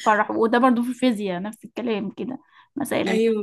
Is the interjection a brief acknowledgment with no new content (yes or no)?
yes